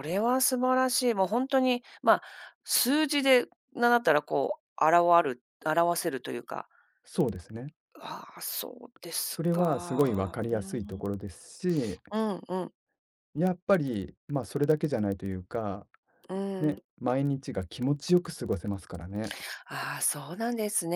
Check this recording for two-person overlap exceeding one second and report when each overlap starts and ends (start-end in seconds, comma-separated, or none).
9.3-11.1